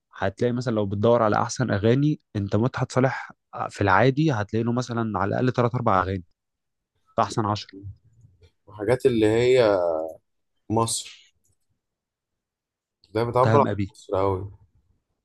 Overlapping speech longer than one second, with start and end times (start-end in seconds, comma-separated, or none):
none